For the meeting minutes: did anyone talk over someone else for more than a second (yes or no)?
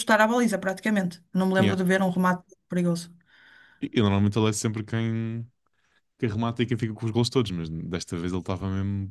no